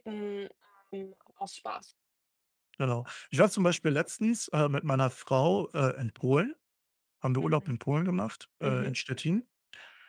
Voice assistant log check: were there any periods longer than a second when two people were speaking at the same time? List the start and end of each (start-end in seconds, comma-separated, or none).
none